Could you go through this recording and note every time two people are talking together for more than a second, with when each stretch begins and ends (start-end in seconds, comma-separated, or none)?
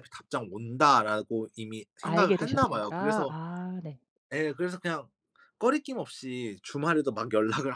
2.0-3.4